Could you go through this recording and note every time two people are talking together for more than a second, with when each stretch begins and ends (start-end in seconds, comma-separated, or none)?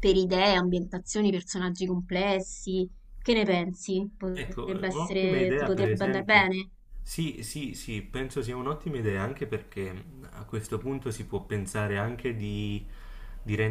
4.3-6.5